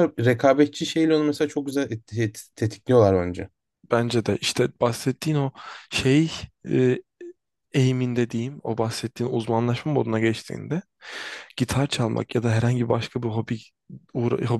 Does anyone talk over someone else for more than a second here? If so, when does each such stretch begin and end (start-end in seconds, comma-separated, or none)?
none